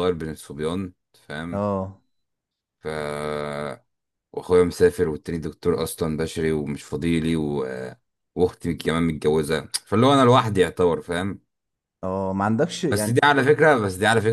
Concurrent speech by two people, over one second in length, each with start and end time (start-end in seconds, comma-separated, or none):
none